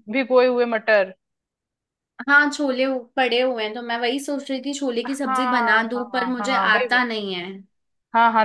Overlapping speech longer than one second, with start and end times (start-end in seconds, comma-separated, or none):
5.1-7.2